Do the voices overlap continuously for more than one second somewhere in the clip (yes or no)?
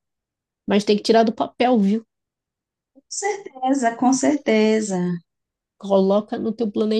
no